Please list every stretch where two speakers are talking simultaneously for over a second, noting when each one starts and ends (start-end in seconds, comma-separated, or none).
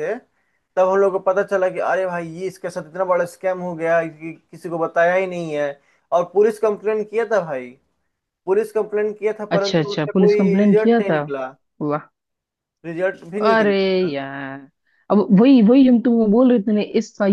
9.6-11.2